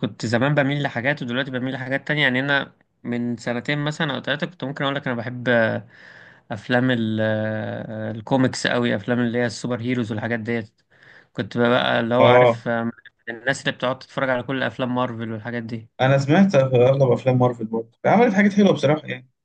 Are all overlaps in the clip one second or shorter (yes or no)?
yes